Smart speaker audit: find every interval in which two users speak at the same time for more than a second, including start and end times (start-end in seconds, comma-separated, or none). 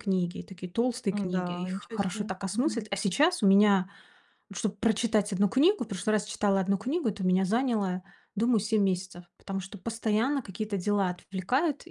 1.1-2.9